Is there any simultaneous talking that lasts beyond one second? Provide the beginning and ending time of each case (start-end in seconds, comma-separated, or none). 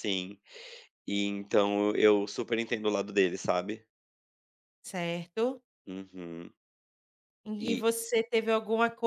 none